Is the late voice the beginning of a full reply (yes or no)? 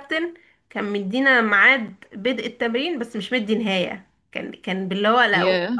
no